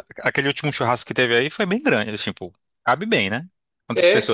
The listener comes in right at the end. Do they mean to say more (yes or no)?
yes